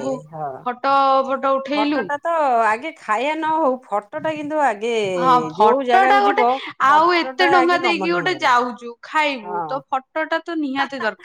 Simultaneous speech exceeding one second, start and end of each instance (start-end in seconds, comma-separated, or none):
6.9-8.6